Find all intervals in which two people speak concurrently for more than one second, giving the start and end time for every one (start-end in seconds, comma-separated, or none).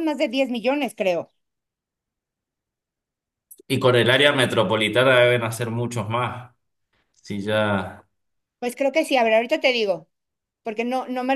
none